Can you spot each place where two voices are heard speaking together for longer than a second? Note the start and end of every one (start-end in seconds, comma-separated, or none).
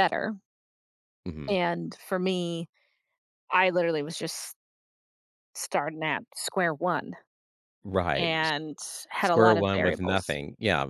9.2-10.4